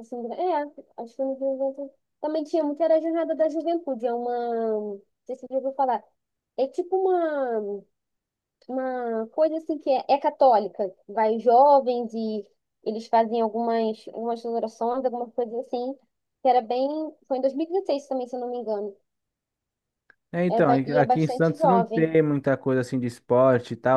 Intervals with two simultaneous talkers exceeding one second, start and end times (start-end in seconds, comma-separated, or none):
20.5-22.1